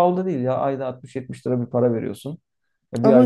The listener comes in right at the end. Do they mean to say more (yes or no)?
yes